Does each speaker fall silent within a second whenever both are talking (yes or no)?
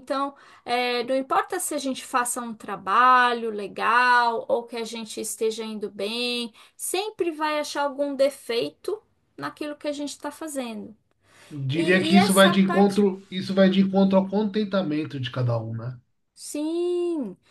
no